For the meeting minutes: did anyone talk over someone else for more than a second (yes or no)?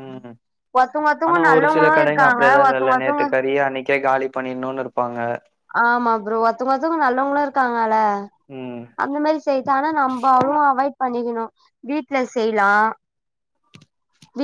yes